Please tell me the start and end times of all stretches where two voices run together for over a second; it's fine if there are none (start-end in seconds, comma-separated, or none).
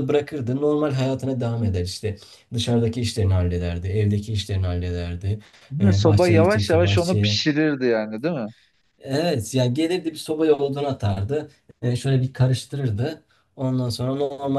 5.9-7.4